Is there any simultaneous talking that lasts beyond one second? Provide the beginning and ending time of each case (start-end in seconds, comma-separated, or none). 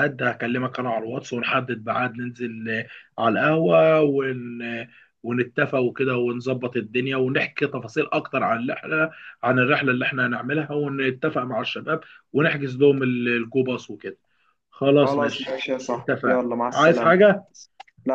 15.0-17.2